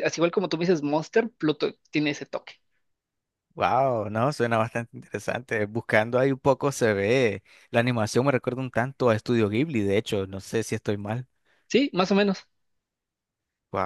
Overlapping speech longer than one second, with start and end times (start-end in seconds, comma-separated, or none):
none